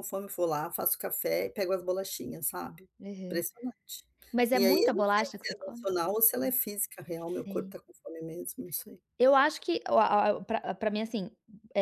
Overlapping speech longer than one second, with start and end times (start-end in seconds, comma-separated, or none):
4.5-5.9